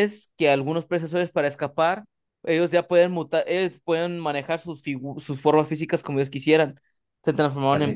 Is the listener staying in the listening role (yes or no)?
no